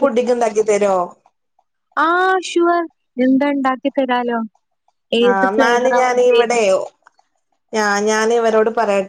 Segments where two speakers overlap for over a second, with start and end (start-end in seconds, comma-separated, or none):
5.3-6.7